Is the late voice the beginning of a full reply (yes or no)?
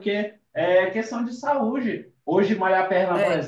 no